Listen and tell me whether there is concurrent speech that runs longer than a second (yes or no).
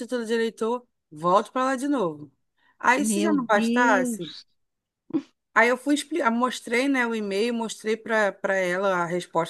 yes